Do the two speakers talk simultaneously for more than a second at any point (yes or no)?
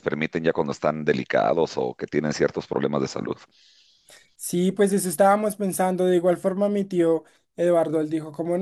no